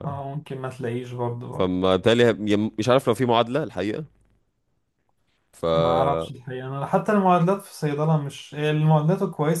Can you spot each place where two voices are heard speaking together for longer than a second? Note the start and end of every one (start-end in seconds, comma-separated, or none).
none